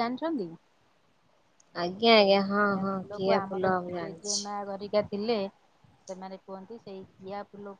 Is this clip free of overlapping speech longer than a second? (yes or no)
no